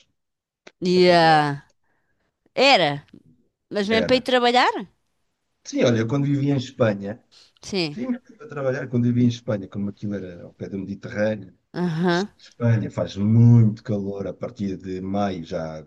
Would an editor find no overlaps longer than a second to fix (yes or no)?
yes